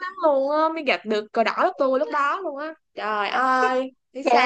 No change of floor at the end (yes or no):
no